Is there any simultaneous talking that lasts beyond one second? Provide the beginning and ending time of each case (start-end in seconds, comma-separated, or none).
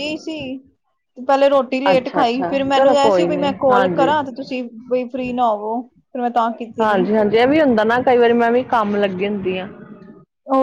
1.9-4.2